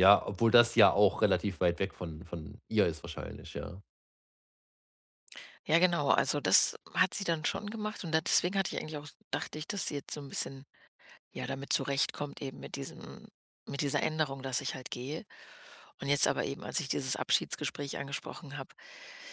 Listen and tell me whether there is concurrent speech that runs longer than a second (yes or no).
no